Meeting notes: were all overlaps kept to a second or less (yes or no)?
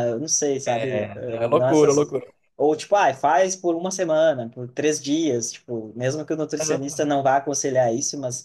no